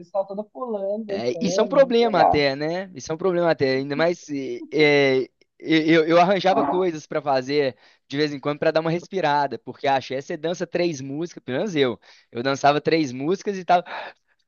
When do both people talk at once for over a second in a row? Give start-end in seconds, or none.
1.1-2.5